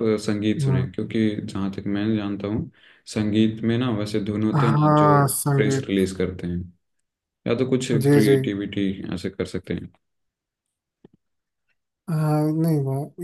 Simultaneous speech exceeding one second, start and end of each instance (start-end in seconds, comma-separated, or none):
4.5-6.0